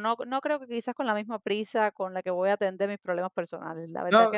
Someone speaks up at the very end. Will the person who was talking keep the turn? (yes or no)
no